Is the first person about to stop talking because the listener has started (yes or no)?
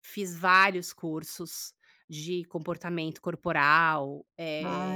yes